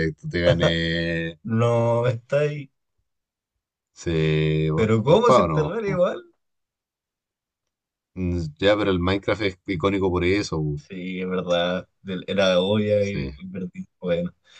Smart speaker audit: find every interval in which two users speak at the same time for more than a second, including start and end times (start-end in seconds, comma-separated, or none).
4.7-6.0